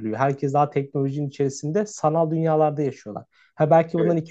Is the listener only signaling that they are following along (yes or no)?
yes